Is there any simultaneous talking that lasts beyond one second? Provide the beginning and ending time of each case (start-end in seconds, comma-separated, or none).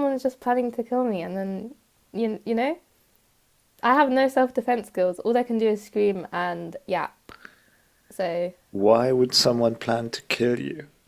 none